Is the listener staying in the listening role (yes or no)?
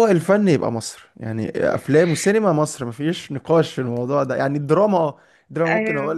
yes